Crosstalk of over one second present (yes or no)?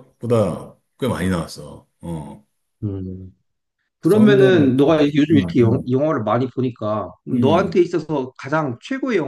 yes